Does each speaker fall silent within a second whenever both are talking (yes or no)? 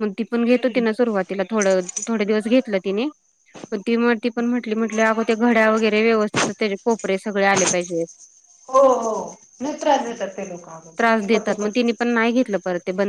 yes